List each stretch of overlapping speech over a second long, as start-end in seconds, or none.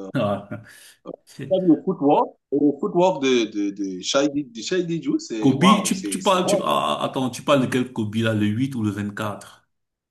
5.4-6.8